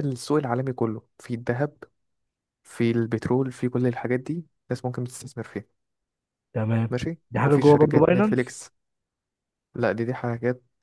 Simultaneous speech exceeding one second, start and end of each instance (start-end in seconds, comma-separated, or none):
7.3-8.6